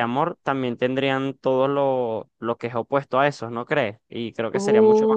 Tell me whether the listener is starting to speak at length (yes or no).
no